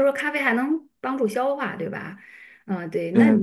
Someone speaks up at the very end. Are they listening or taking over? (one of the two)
taking over